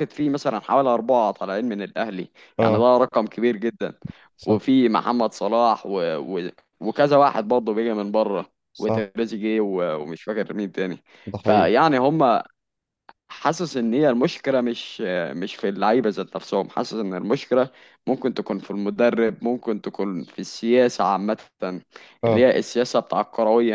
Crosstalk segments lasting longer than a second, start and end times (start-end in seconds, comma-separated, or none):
none